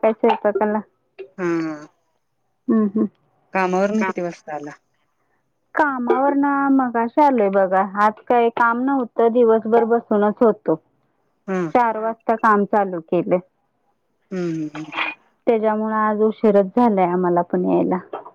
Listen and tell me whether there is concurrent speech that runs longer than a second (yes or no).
no